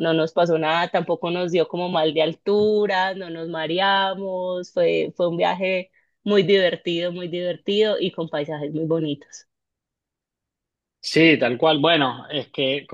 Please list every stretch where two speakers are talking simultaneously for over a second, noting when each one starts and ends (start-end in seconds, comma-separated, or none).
none